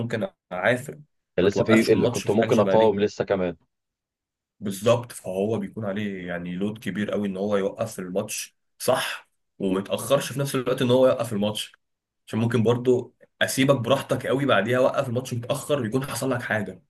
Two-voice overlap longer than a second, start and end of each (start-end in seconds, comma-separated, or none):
1.4-3.0